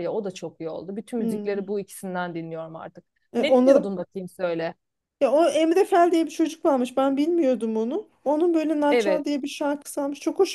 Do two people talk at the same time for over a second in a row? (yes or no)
no